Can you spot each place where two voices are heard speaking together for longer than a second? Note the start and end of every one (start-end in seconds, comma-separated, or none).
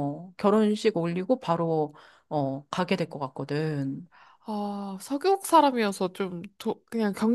none